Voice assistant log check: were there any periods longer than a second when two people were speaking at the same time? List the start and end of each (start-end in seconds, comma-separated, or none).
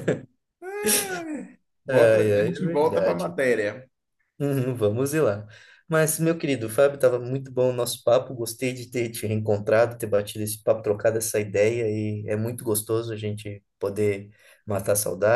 1.9-3.4